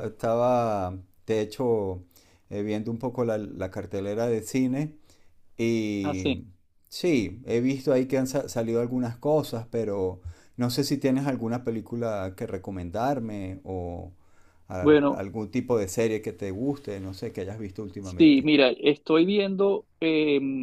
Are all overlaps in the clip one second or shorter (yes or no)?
yes